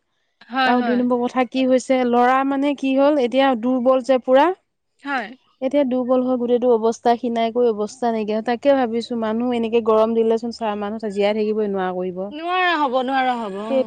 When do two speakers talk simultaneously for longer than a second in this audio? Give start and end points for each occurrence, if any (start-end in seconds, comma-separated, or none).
none